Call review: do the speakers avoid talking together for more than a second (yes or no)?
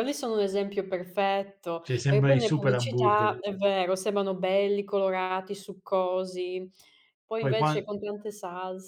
no